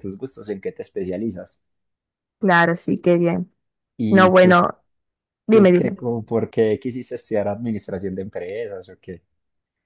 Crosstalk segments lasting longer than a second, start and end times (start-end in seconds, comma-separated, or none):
none